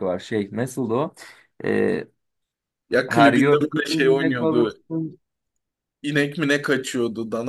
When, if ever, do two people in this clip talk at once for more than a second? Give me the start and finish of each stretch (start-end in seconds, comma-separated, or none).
3.1-4.8